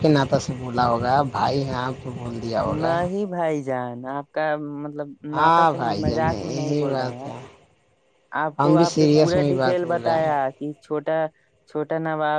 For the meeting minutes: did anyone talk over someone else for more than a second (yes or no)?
yes